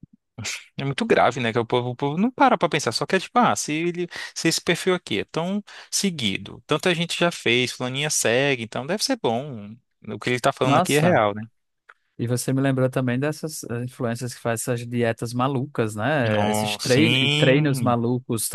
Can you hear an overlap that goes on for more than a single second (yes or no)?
yes